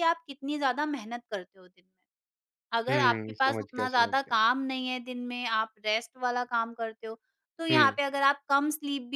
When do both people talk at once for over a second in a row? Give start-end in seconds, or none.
2.9-4.4